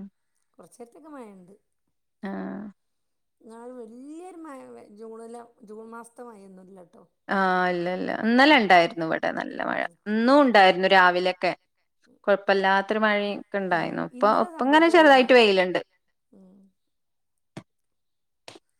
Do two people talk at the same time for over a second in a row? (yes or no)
yes